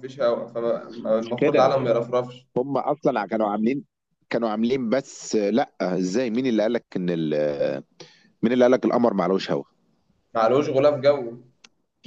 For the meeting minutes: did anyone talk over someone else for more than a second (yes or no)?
no